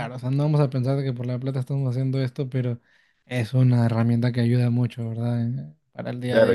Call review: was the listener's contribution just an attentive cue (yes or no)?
no